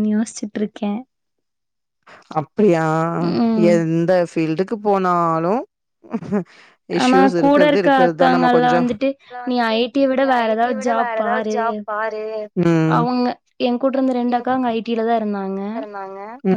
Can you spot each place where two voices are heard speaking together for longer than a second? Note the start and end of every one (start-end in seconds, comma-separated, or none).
7.0-8.8